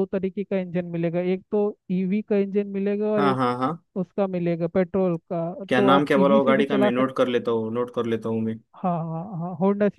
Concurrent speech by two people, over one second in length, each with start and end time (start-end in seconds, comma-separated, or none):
5.7-7.2